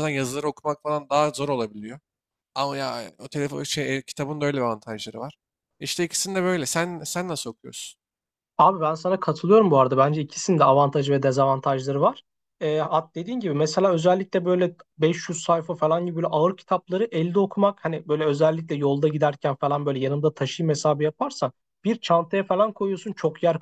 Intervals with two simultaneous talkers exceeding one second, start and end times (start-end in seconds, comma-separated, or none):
none